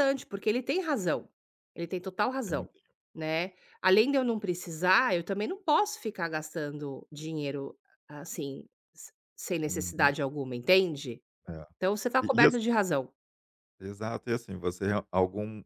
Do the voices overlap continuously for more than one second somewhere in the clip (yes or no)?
no